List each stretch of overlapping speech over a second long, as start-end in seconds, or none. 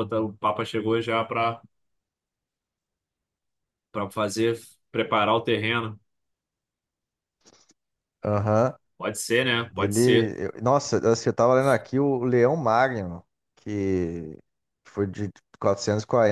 none